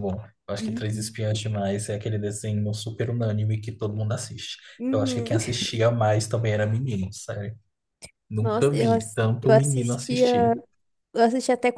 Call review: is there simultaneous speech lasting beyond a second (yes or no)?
yes